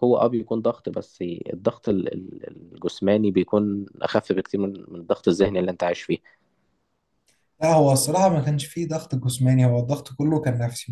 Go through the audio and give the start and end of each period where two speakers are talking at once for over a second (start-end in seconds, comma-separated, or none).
none